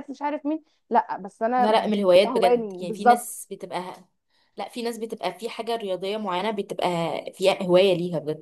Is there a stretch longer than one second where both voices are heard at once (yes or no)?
yes